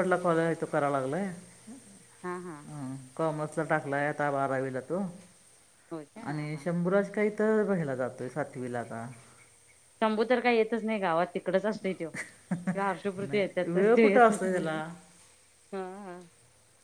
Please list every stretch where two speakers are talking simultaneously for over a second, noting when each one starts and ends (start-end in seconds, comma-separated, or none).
13.2-14.8